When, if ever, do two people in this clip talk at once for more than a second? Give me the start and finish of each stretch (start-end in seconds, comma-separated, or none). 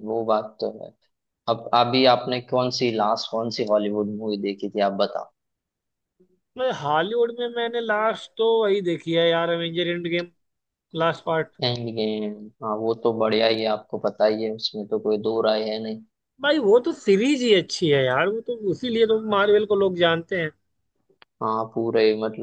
none